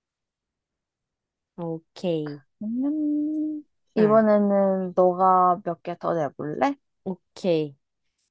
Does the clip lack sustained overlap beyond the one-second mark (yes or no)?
yes